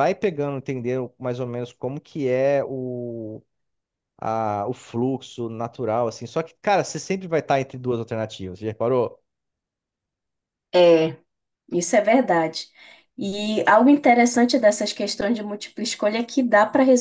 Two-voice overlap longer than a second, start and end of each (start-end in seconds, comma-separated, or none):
none